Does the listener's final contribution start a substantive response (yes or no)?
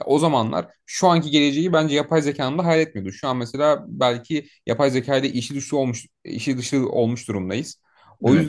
no